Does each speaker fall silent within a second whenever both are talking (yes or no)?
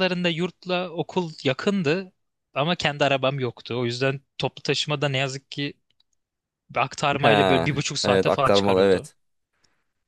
no